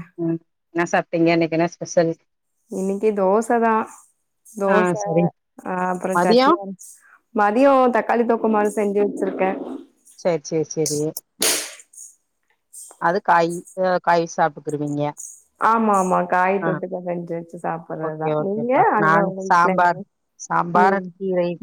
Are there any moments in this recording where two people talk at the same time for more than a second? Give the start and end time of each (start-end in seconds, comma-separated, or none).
18.1-20.0